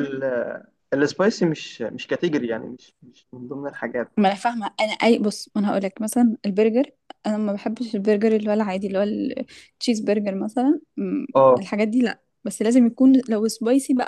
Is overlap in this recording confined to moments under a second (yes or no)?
yes